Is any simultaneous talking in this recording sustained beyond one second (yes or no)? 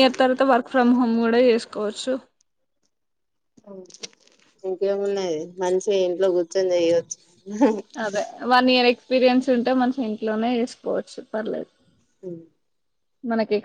no